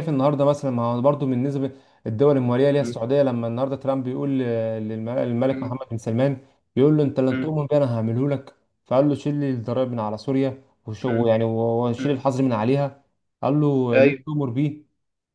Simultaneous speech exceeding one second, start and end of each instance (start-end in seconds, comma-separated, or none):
none